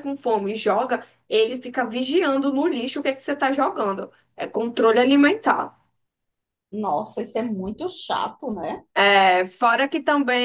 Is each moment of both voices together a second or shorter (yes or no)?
yes